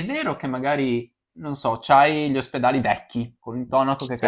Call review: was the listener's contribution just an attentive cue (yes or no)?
yes